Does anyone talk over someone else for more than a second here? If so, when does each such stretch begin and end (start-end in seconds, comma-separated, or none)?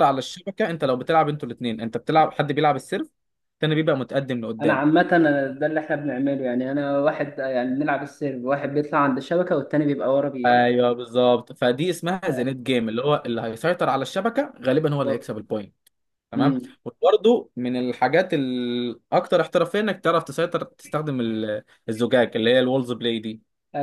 none